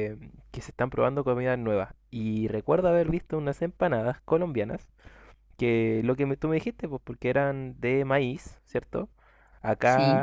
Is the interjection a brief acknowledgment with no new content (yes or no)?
yes